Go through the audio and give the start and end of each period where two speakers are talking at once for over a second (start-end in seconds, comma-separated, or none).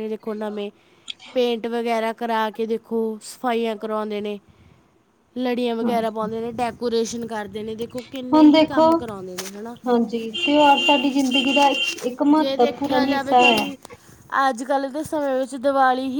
12.3-13.6